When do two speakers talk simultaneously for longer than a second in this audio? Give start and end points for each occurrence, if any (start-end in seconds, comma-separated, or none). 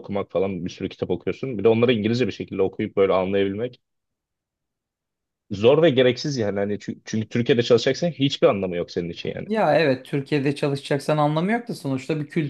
none